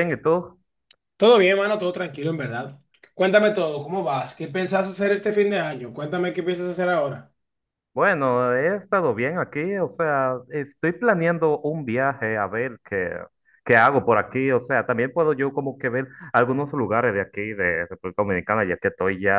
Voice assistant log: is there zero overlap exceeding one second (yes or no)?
yes